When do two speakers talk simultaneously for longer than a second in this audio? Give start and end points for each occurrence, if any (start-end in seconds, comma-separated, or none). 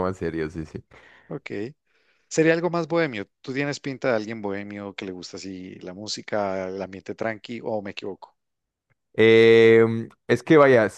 none